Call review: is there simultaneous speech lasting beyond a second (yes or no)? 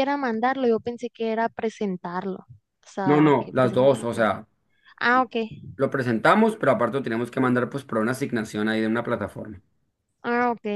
yes